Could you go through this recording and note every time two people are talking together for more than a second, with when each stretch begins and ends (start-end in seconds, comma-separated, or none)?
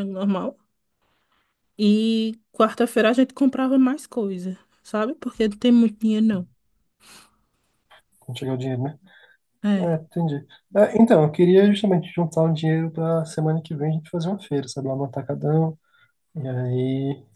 none